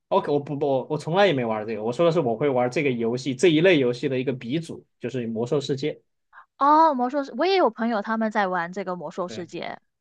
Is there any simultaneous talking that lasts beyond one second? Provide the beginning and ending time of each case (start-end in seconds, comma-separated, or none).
none